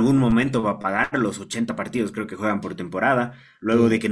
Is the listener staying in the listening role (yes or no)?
yes